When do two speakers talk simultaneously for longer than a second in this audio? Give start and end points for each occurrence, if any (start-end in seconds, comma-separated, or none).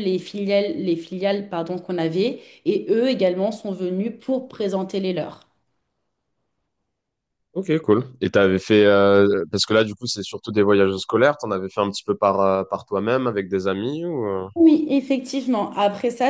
none